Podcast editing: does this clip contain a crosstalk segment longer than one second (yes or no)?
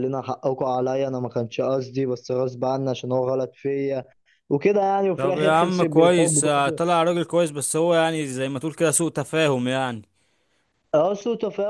yes